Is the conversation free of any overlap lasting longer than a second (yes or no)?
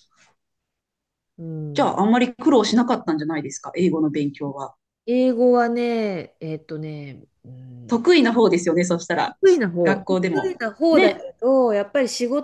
no